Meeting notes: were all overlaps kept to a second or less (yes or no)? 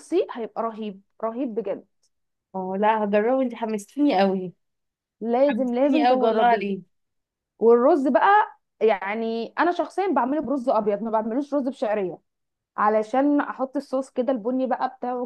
no